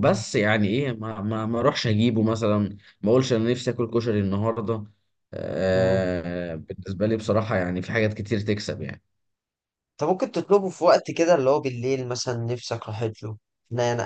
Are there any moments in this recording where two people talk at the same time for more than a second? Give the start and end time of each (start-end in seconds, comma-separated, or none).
none